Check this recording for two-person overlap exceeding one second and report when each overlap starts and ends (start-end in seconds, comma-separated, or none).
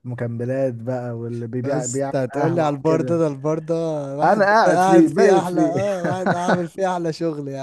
1.6-3.2, 4.2-5.7